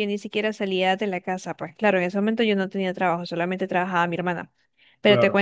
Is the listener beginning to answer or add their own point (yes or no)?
no